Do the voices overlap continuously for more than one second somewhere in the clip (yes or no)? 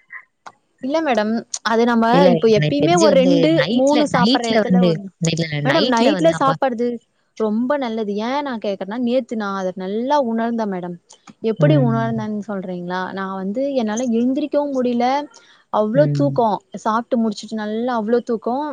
yes